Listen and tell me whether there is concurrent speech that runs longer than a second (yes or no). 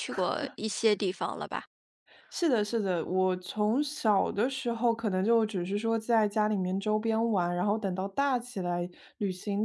no